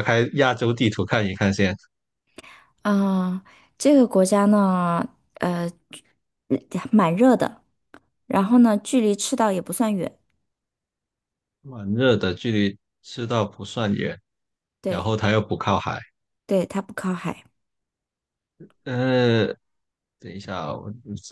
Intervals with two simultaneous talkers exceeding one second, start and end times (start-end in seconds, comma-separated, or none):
none